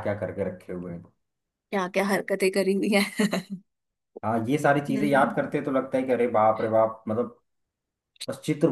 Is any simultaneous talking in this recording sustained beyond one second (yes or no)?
no